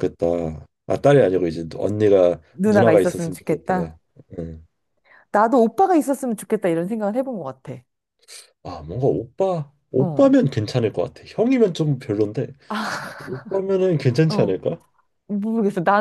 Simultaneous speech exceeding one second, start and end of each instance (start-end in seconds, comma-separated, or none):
2.5-4.0